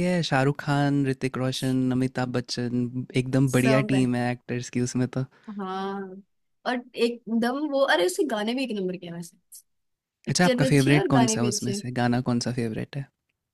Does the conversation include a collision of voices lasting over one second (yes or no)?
yes